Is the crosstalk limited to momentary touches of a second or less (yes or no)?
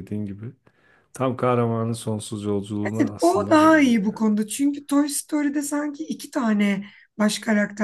no